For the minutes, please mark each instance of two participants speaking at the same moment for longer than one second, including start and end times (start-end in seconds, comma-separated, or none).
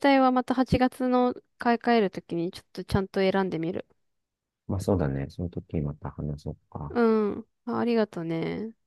none